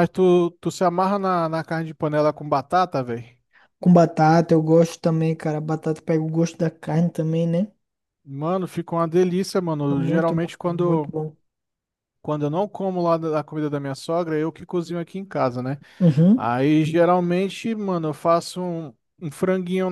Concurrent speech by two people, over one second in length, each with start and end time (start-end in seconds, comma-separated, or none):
9.9-11.1